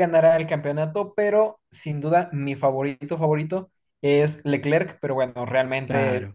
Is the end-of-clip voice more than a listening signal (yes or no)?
no